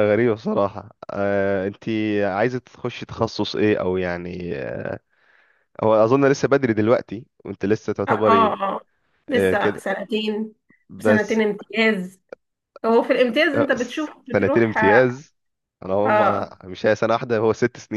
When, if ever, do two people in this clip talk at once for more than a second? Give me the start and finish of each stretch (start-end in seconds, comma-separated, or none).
13.5-15.1